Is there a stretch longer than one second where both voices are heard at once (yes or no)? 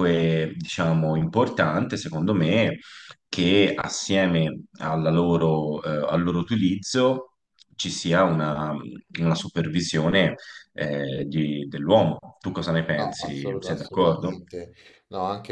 yes